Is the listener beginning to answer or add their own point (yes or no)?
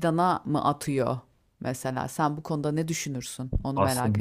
yes